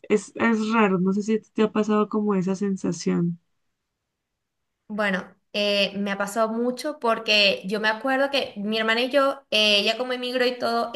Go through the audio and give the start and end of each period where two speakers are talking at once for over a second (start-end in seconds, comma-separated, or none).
none